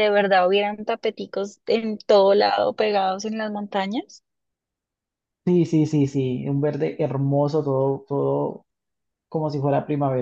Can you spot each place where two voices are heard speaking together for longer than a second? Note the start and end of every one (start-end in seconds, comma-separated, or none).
none